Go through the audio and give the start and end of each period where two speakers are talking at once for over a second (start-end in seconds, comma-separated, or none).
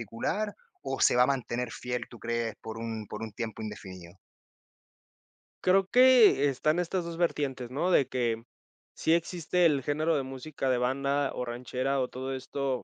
none